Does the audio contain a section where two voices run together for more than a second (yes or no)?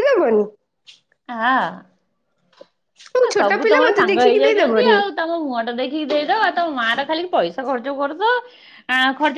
yes